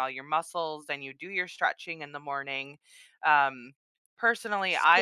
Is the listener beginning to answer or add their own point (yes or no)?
no